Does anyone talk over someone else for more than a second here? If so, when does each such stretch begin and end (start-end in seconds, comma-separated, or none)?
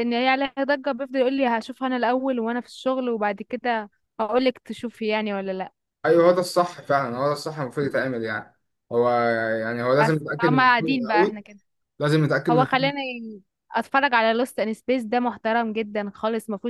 10.0-11.4